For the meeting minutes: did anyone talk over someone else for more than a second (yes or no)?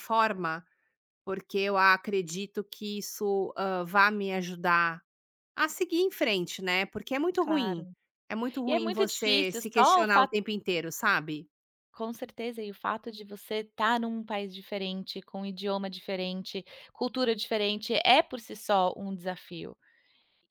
yes